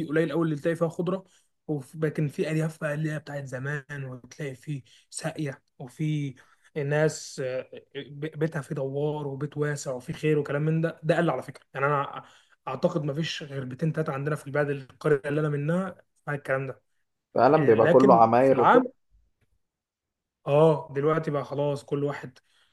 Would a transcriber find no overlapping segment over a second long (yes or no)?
no